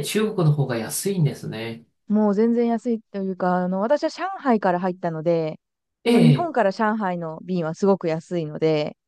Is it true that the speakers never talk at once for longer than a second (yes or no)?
yes